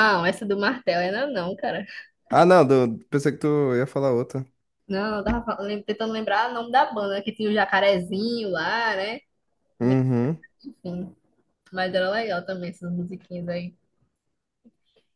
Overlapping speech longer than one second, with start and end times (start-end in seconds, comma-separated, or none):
none